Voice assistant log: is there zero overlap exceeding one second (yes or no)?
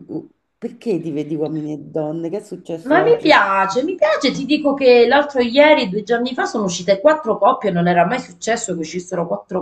yes